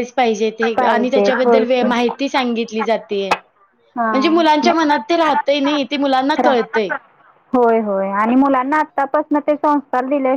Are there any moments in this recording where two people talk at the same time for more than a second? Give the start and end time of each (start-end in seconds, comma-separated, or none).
0.8-3.0